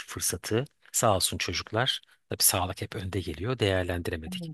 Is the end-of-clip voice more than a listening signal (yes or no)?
no